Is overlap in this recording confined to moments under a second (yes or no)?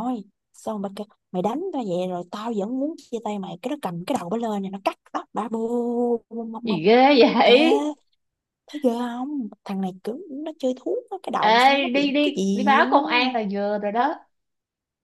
no